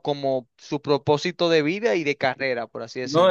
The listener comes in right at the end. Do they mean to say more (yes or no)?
yes